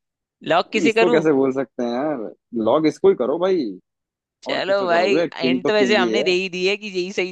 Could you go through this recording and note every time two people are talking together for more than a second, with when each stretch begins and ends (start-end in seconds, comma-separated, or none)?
4.5-6.2